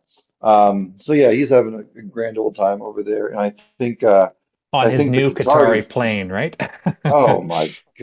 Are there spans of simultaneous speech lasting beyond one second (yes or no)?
yes